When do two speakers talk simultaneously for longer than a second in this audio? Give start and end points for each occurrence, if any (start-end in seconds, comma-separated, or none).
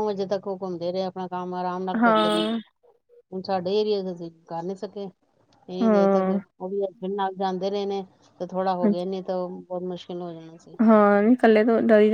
none